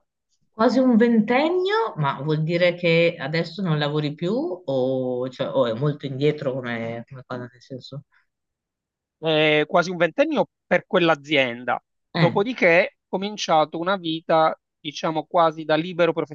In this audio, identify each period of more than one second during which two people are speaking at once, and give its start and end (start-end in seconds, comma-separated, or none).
none